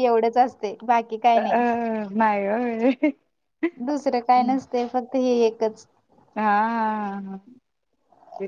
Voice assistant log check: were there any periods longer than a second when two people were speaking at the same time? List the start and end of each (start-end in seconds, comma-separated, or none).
none